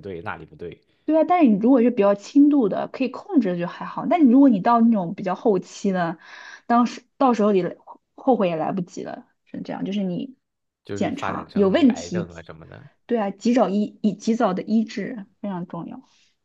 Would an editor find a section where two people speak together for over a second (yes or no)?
yes